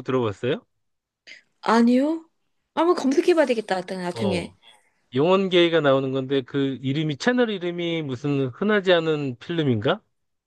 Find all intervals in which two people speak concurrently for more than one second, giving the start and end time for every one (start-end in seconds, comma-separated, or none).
none